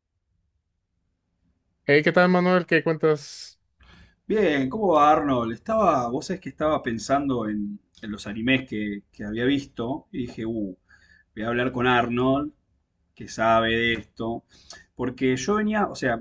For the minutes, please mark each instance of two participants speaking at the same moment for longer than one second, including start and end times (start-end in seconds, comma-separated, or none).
none